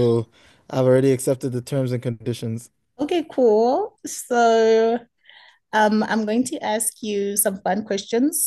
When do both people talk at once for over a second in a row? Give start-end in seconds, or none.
none